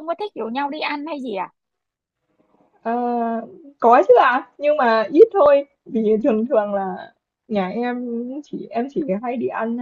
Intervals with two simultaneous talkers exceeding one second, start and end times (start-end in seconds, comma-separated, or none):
none